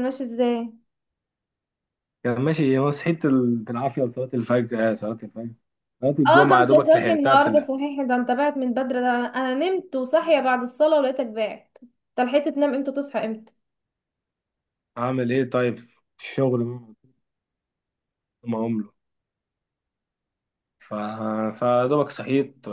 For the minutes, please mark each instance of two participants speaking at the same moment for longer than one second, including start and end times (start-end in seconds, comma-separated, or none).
6.3-7.7